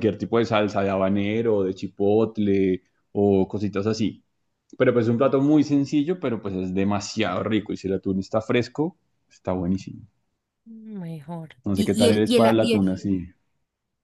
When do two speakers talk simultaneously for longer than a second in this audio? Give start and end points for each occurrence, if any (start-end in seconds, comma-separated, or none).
11.7-13.0